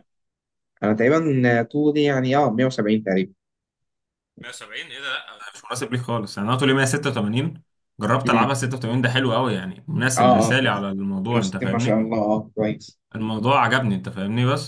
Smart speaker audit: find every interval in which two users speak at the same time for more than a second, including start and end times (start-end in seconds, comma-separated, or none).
10.2-12.0